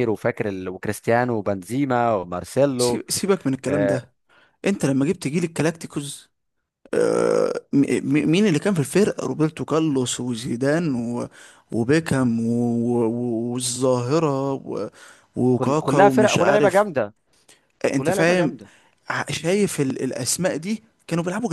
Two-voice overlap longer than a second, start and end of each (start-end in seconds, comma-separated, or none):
15.5-16.9